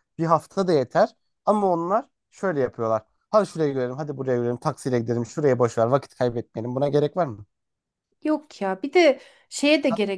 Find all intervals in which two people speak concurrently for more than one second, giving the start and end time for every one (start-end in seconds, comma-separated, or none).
none